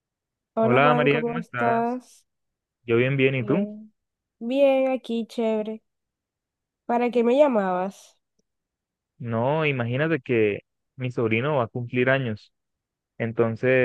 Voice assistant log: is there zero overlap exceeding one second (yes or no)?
no